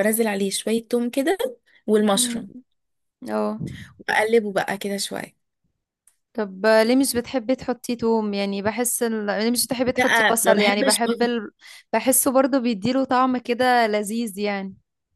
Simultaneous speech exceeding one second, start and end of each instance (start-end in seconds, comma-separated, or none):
10.0-11.3